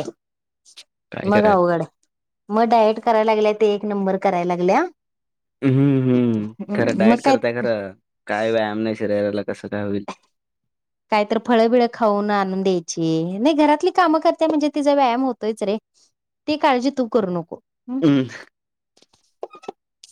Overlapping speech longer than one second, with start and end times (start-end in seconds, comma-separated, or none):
none